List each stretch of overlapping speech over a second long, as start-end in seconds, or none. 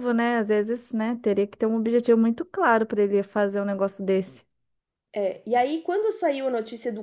none